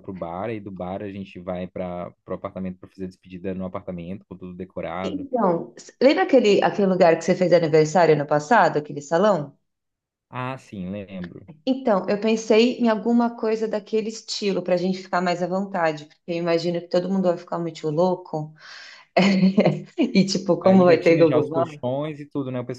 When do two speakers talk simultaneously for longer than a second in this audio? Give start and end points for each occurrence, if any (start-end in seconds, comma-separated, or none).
20.6-21.9